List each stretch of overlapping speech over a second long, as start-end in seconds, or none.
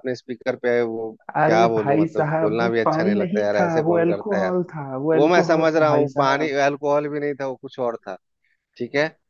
1.4-4.5, 5.1-6.5